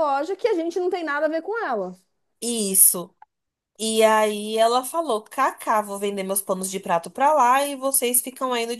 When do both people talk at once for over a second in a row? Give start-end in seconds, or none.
none